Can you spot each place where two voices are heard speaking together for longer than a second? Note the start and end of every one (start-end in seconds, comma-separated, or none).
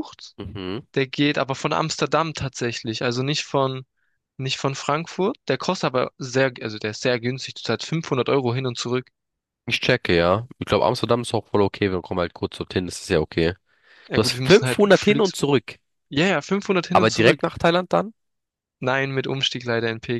14.1-15.5